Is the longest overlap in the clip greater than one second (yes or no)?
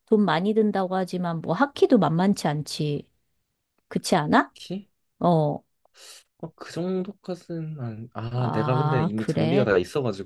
yes